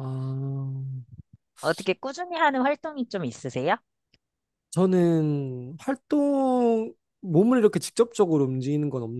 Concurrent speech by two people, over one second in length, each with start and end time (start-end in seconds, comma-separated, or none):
none